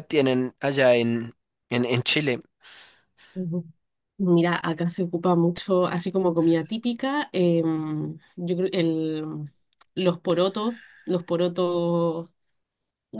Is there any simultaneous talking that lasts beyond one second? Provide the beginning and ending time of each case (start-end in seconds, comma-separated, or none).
none